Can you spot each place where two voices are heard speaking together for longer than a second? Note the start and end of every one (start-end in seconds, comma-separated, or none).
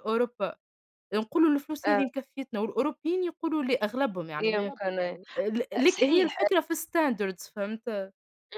none